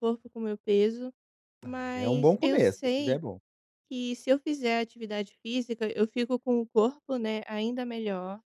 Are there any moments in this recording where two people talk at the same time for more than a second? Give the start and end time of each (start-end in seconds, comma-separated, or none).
1.6-3.2